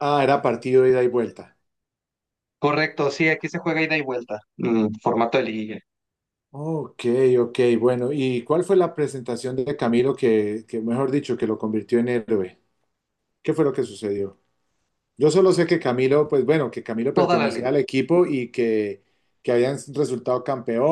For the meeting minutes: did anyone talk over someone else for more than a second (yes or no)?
no